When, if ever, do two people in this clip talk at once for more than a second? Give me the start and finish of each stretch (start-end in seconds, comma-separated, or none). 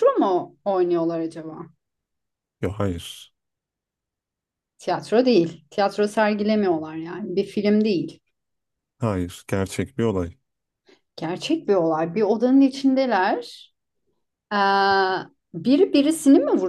none